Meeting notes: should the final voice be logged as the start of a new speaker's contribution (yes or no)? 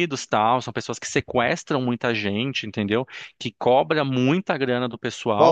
yes